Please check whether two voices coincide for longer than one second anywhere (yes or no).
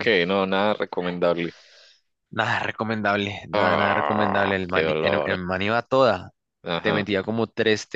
yes